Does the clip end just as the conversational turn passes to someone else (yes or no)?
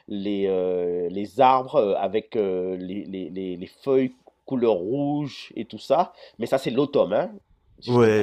yes